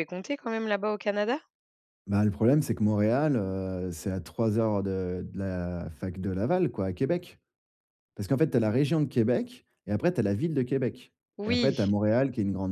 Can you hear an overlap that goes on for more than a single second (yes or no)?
no